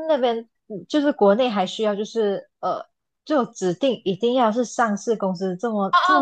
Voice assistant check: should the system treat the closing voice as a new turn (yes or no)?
yes